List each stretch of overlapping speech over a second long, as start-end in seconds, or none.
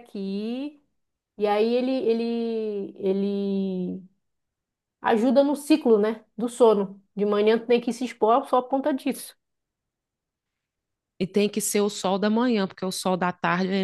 none